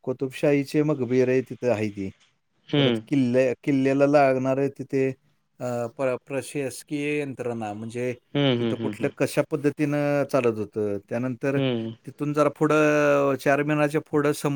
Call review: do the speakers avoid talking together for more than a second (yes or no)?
yes